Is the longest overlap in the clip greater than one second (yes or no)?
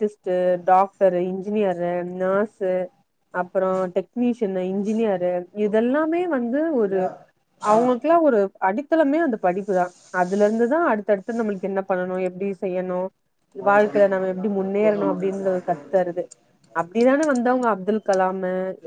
yes